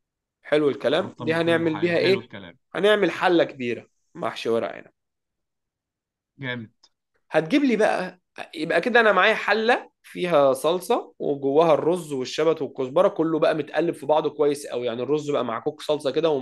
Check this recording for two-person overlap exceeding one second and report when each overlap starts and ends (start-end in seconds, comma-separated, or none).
0.9-2.3